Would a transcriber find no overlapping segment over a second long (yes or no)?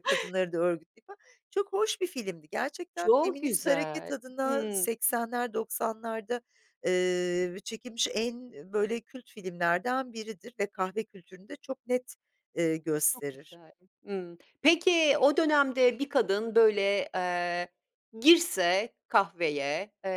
no